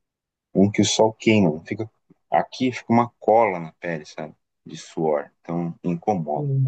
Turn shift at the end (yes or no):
yes